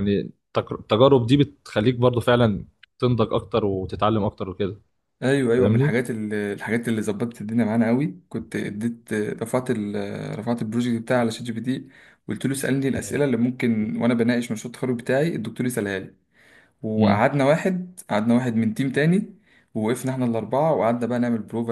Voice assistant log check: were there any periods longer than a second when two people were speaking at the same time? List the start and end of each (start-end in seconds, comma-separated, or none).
none